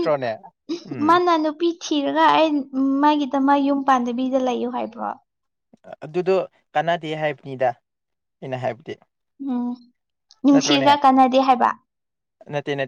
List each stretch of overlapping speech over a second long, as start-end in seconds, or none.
none